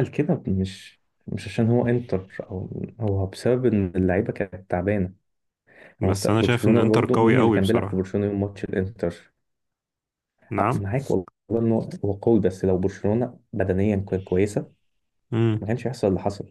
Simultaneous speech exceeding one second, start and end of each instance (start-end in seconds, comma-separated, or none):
6.0-8.1